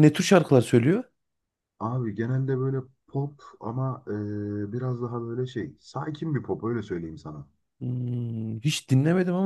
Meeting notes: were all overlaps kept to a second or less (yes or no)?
yes